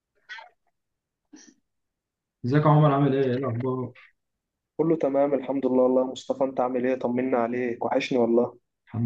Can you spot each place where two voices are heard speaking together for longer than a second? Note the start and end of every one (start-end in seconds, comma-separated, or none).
none